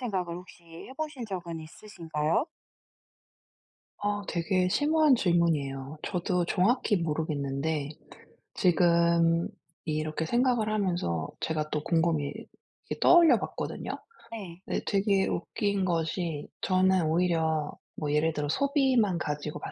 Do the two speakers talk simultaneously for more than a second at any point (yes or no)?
no